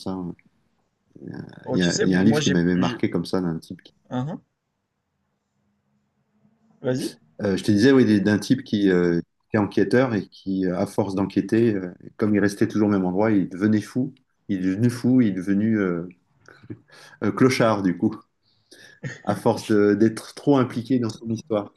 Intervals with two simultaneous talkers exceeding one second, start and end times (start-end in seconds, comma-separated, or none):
1.7-3.0